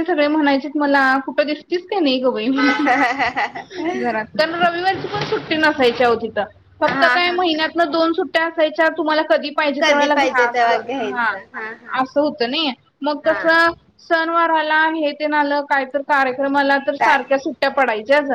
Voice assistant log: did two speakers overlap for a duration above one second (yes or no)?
yes